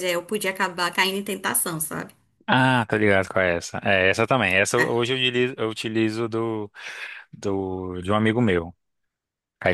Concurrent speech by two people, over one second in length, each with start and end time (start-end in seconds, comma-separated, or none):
none